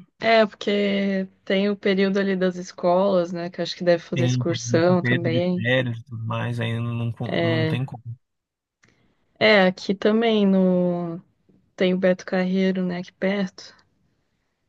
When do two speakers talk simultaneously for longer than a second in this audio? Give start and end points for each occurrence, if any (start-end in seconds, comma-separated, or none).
4.1-5.7